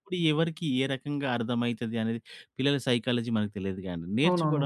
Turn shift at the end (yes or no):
no